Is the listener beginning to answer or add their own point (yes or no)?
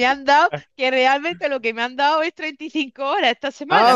yes